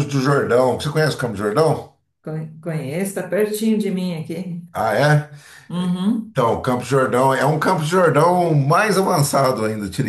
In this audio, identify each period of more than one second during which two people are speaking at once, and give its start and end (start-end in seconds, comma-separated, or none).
none